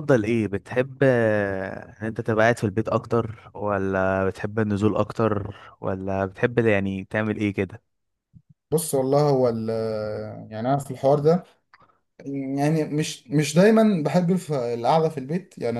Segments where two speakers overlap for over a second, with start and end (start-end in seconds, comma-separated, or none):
none